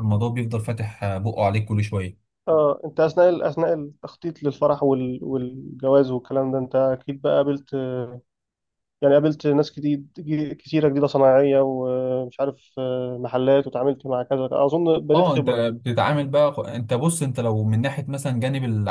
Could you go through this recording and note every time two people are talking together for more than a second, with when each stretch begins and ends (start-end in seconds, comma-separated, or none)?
none